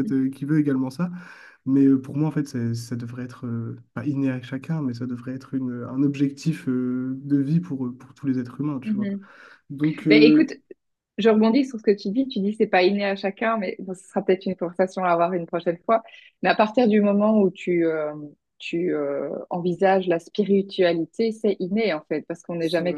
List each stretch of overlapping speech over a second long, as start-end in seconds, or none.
none